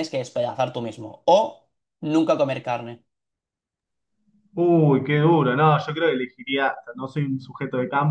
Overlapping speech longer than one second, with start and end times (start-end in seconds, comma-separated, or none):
none